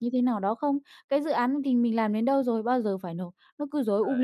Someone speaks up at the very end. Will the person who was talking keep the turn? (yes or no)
yes